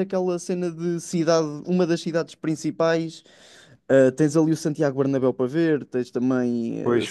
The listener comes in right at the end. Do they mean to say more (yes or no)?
yes